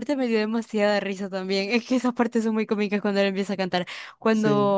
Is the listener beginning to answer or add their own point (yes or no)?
no